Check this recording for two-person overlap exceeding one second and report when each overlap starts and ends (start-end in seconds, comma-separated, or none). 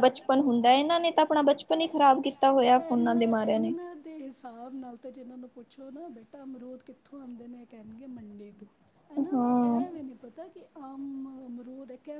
none